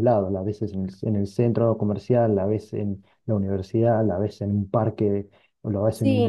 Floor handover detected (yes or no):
no